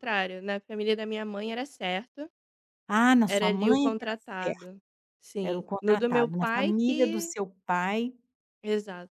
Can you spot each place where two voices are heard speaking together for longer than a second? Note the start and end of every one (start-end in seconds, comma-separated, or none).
3.2-4.7, 5.4-7.3